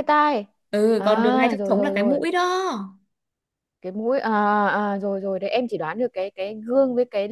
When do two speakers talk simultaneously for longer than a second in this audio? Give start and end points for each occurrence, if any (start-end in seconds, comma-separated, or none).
1.0-2.2